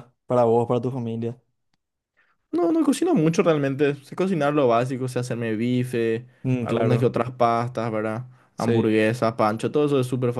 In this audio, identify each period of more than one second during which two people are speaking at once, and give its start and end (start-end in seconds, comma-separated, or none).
none